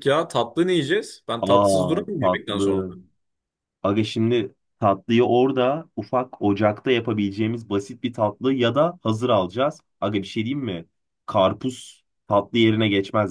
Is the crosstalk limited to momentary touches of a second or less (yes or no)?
no